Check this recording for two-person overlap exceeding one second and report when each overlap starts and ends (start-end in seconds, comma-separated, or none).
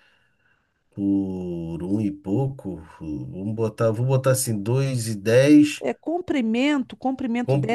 none